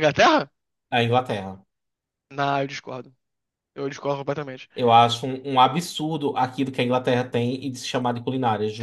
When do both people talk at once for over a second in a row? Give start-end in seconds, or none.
none